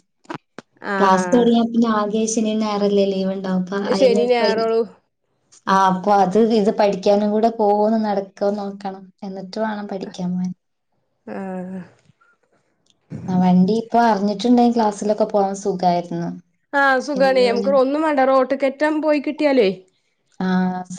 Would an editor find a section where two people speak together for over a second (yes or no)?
no